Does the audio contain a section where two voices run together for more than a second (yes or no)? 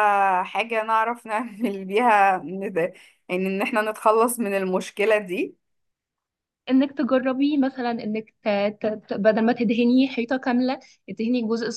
no